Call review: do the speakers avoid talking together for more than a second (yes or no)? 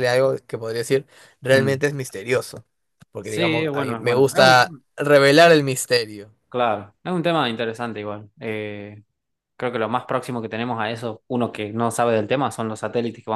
no